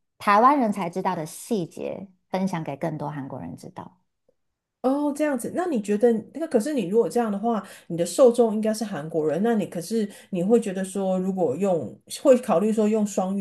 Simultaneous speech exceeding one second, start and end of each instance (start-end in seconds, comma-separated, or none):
none